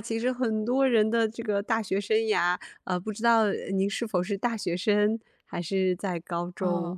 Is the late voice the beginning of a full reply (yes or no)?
yes